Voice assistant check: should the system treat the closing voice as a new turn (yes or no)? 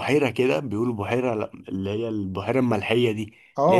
yes